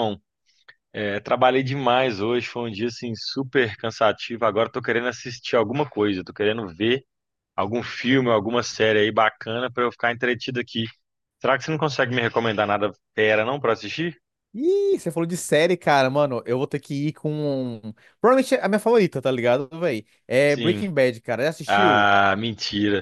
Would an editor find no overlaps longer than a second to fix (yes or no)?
yes